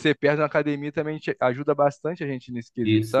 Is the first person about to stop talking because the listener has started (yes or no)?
yes